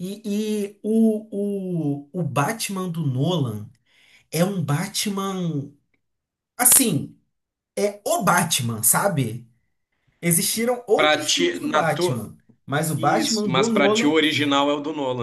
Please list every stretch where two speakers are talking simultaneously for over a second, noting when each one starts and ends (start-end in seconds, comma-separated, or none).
10.9-12.3, 12.9-14.2